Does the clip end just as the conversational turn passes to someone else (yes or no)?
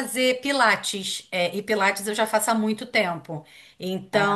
no